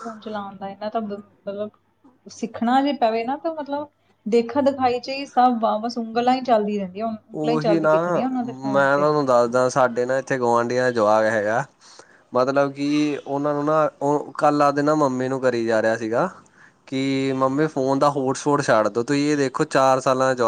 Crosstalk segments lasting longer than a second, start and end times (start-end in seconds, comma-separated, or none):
none